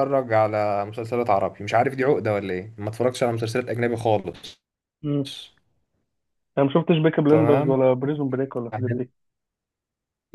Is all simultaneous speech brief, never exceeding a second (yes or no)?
yes